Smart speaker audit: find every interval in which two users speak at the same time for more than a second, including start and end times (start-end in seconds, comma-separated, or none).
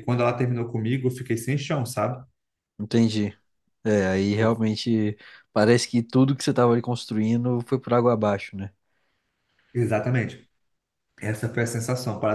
none